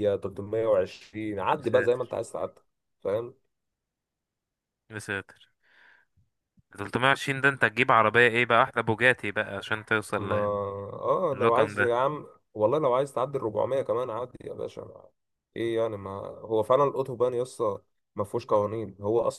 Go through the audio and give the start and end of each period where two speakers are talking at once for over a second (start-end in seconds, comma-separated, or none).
none